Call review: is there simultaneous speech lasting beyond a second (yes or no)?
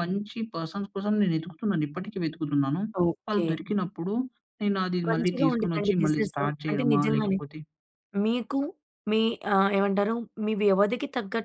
yes